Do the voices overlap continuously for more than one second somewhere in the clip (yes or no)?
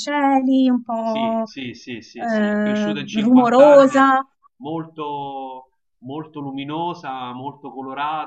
yes